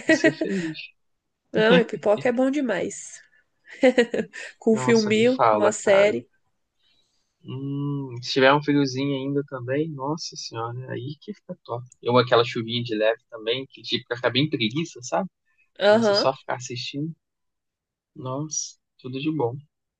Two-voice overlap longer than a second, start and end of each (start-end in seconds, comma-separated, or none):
4.7-6.1